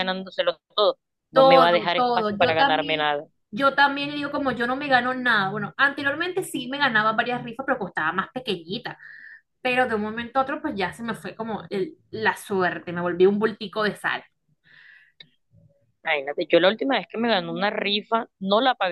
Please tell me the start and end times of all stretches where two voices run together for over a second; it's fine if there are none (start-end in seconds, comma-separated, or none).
1.3-3.1